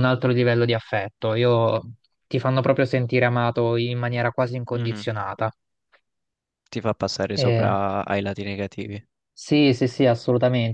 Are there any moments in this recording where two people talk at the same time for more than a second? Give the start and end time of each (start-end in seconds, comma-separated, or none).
none